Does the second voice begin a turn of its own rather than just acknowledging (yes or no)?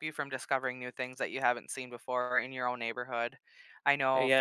yes